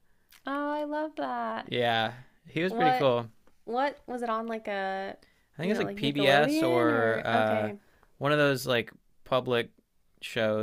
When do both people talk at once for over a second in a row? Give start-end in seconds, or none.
5.6-7.7